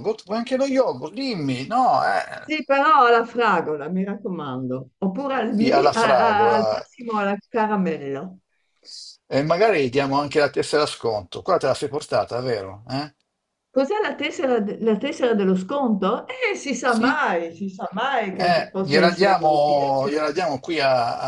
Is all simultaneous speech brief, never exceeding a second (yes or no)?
no